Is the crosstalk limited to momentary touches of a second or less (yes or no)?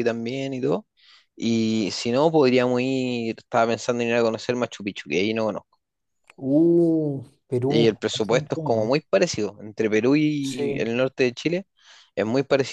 no